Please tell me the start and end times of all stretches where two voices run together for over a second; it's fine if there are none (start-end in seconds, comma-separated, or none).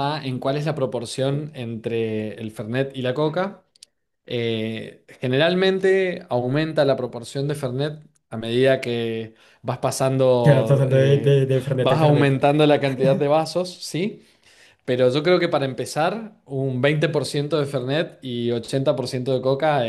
10.4-12.3